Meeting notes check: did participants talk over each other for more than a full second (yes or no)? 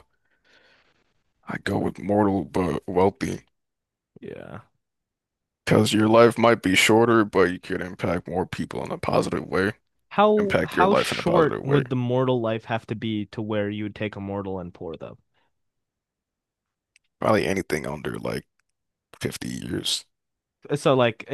yes